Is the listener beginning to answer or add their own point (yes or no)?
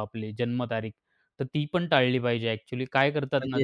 no